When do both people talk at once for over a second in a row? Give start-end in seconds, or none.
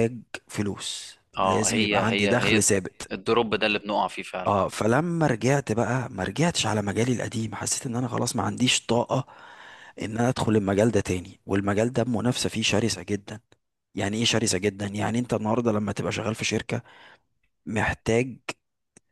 1.4-2.7